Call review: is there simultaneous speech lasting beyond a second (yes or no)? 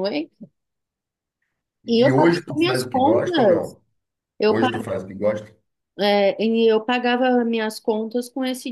yes